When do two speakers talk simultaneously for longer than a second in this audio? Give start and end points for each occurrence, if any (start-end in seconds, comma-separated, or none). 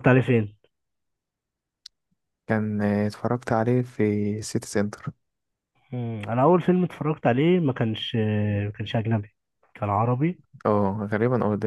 none